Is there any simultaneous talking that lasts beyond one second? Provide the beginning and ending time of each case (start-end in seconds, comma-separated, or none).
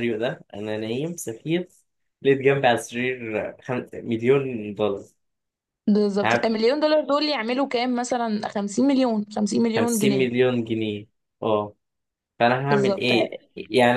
none